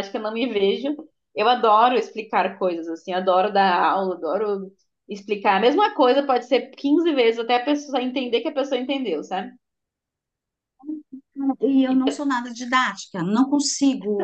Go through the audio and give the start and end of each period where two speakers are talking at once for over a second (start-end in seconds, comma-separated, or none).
none